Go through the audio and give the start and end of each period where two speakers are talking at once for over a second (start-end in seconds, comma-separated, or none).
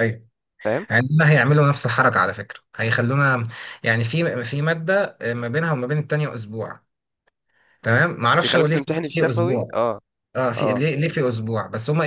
8.4-9.8